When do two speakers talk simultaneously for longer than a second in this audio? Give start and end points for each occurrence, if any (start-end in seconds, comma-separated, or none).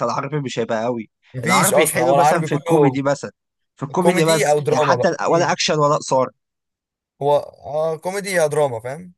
1.3-3.0, 4.0-5.6